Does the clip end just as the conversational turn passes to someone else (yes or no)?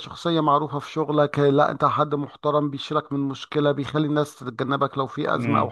yes